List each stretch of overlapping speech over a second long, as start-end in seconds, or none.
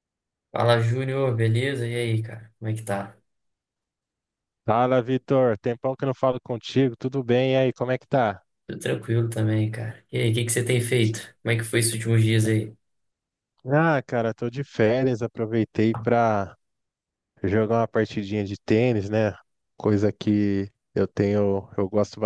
none